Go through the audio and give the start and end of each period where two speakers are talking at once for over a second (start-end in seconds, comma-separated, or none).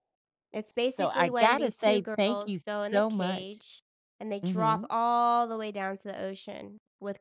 0.9-3.6